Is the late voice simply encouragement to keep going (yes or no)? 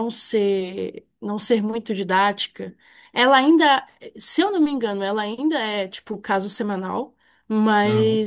yes